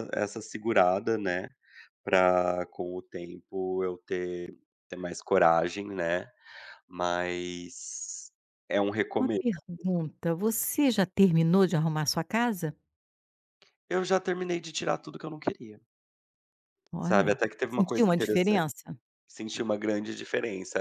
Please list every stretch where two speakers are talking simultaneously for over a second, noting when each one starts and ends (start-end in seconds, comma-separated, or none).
17.0-18.6